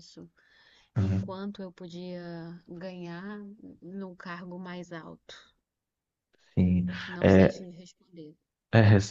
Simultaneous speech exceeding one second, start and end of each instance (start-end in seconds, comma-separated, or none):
none